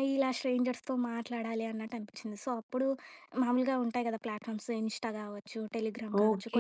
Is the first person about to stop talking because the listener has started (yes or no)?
yes